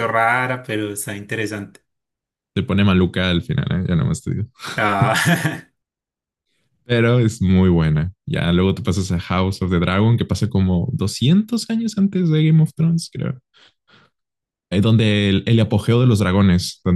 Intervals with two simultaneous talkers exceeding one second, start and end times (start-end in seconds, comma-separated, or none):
none